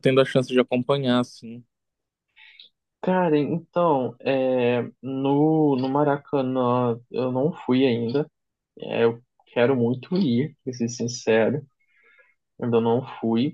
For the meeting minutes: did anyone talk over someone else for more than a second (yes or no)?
no